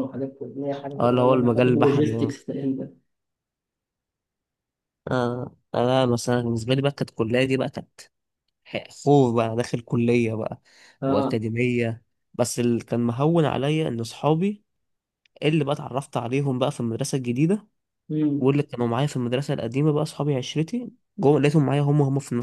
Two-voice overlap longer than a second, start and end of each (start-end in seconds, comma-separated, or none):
1.0-2.4